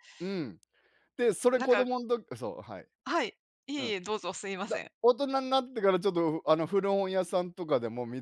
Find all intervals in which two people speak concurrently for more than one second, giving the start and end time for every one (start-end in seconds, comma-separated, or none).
none